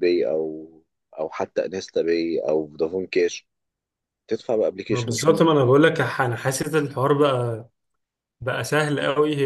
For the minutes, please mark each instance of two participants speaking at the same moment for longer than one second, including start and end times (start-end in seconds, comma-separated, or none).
none